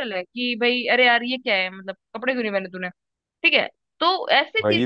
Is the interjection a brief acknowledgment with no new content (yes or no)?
yes